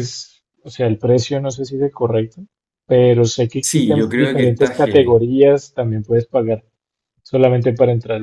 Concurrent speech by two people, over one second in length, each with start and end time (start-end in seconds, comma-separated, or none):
3.6-5.2